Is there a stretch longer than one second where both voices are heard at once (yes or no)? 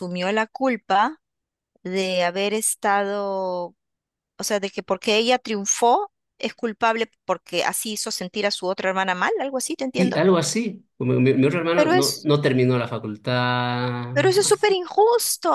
no